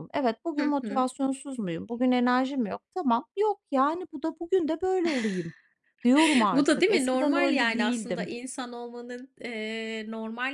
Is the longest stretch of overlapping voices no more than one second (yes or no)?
no